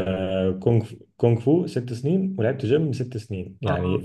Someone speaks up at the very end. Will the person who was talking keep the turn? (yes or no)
yes